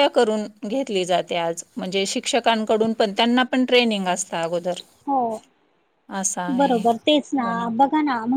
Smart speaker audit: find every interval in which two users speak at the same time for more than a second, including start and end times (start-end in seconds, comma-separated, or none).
none